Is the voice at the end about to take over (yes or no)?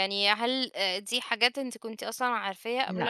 no